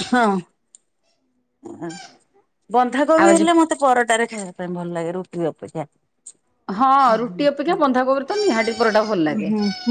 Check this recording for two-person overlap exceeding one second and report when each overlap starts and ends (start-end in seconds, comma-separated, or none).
none